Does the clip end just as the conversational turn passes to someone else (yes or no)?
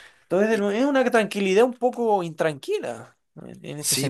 yes